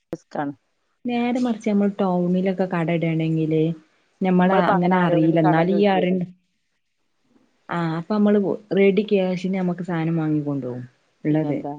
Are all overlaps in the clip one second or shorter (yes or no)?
no